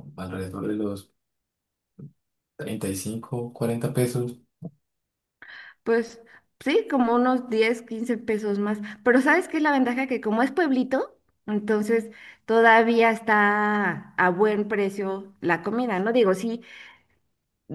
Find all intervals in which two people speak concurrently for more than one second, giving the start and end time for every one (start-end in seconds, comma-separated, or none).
none